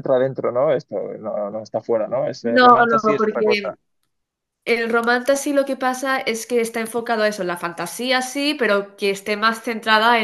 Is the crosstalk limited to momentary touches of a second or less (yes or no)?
no